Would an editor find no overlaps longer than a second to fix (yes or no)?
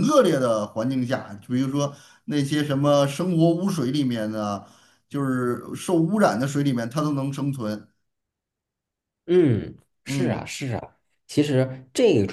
yes